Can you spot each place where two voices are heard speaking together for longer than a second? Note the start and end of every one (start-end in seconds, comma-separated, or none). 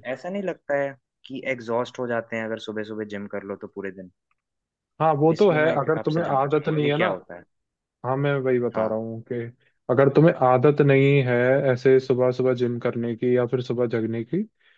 5.4-7.0